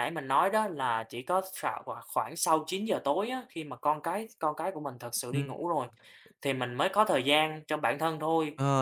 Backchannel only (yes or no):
no